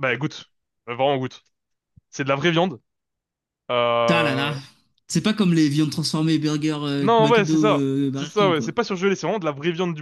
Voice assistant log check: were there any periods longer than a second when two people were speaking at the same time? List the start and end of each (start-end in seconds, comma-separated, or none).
7.0-8.7